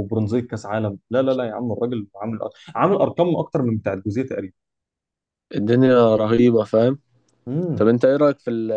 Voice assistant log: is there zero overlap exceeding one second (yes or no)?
yes